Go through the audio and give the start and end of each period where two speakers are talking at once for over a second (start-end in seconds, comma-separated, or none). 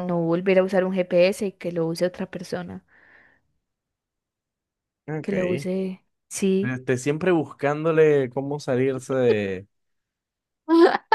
none